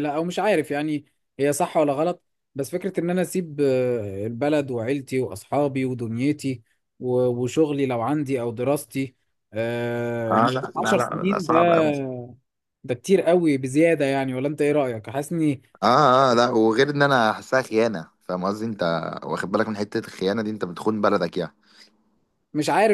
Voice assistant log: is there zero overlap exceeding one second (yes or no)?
no